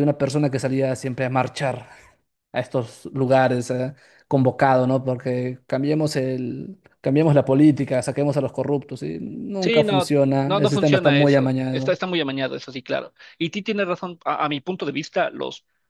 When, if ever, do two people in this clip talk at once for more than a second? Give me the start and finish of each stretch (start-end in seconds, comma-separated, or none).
9.6-12.0